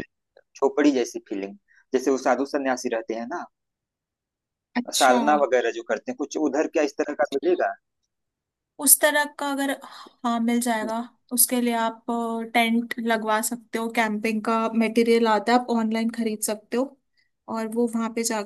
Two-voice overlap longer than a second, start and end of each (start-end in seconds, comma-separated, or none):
none